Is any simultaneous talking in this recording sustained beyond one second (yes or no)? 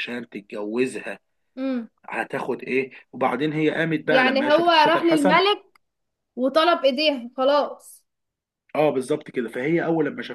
yes